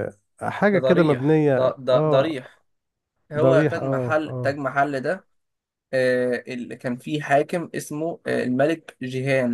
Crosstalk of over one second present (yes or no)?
yes